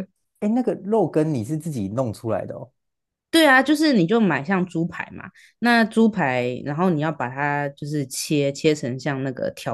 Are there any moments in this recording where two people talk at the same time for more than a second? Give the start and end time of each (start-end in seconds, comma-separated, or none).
none